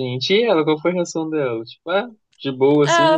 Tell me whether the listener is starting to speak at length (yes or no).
yes